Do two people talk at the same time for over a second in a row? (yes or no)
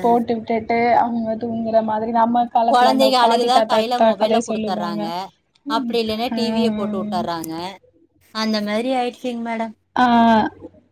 yes